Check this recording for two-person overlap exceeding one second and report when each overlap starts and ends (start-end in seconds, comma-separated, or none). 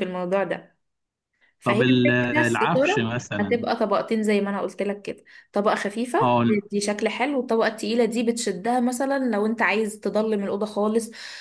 1.6-3.6